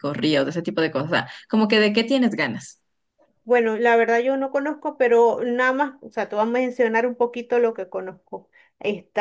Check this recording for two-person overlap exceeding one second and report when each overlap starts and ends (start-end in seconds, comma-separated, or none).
none